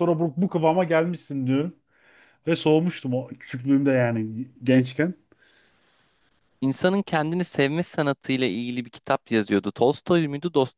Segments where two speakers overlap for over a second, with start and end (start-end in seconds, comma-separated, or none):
none